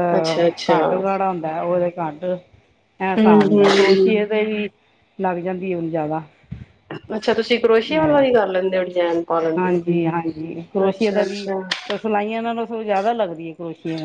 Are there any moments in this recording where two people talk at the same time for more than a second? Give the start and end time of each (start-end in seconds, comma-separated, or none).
none